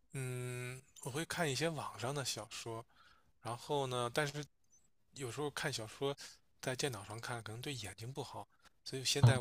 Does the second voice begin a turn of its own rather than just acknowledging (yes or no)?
no